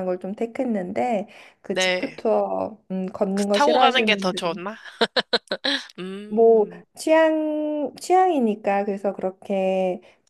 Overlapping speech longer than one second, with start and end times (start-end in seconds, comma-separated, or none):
3.3-4.6